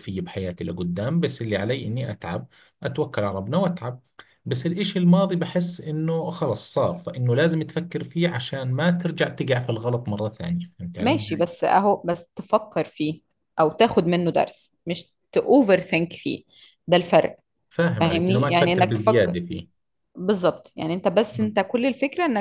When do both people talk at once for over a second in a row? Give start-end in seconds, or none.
18.0-19.3